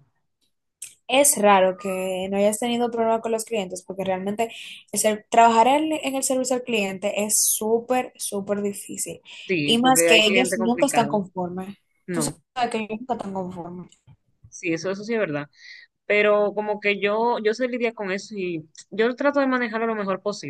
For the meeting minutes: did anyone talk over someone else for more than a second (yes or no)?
yes